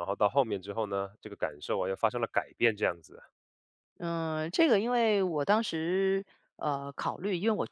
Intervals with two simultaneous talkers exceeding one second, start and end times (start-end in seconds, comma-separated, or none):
none